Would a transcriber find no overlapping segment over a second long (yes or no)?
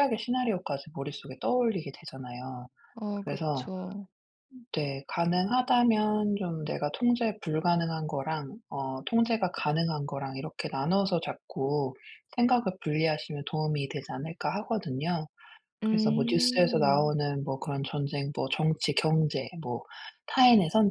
no